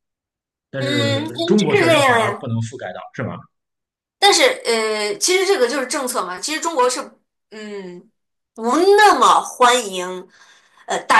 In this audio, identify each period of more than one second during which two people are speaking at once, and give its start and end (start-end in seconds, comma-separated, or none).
0.8-2.5